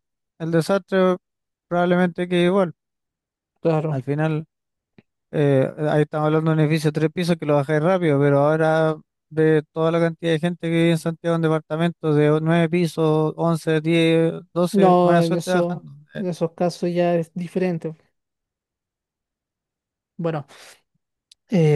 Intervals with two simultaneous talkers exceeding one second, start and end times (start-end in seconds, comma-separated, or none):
14.7-16.2